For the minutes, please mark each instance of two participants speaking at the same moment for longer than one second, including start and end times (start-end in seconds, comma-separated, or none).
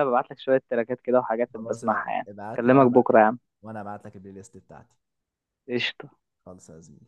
1.5-3.1